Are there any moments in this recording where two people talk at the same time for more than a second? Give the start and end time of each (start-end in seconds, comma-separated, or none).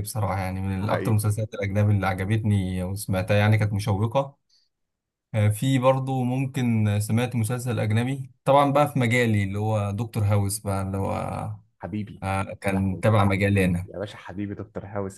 none